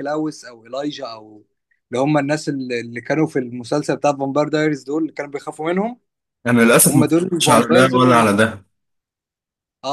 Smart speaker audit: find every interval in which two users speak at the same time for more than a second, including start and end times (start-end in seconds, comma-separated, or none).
6.9-8.3